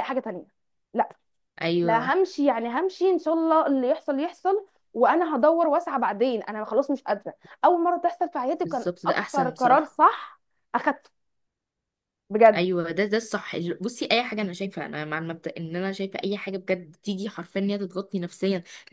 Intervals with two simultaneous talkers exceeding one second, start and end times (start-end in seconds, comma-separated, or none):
8.6-10.0